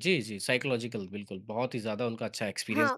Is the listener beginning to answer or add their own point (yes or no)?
yes